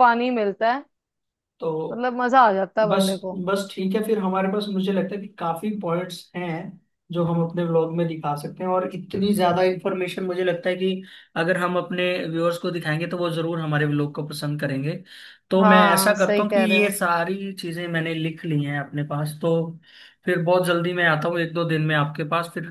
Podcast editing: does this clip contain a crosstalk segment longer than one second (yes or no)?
yes